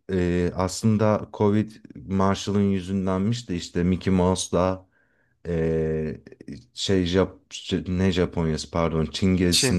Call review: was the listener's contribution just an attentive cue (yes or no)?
yes